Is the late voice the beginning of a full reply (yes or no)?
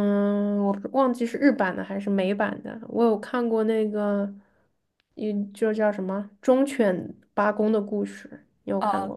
yes